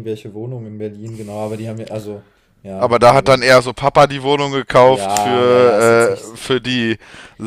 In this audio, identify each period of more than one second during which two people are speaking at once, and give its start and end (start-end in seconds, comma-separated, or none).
4.8-6.4